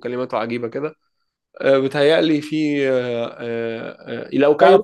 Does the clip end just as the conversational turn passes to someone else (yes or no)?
no